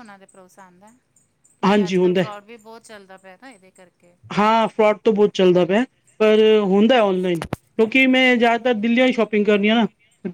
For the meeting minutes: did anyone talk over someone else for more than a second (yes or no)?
no